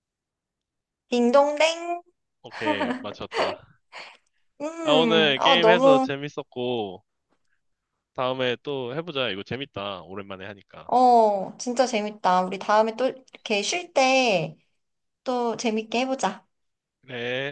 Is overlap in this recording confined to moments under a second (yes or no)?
no